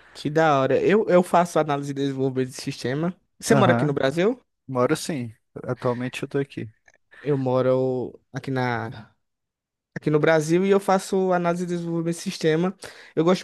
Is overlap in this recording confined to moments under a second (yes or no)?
yes